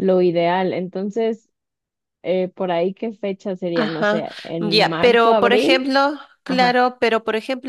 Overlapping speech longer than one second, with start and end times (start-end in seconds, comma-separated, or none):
3.7-5.9